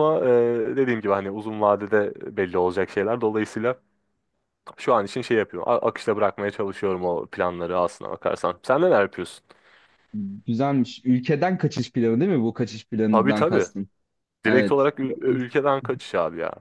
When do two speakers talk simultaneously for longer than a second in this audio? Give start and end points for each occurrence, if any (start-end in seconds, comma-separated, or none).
none